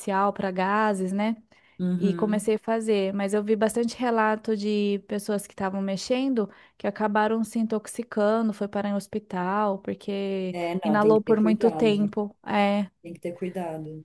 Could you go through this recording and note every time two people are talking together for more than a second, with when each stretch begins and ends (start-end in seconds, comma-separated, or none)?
10.5-12.1